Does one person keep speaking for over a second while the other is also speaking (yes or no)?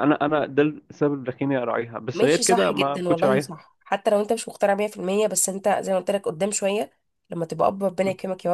yes